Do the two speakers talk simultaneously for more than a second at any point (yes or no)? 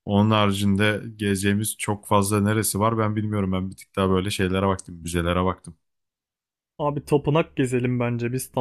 no